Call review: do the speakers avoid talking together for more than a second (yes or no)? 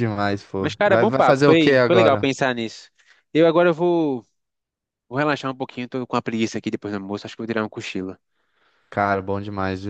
no